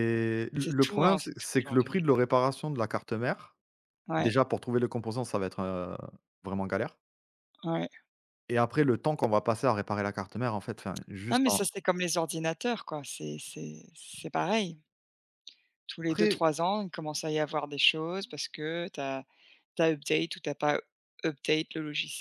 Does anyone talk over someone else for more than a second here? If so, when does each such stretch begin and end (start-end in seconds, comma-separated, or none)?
0.6-2.0